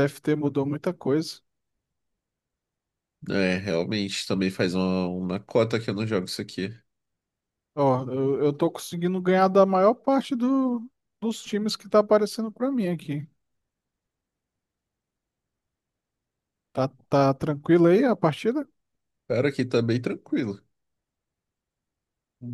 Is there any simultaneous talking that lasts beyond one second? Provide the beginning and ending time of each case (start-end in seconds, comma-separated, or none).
none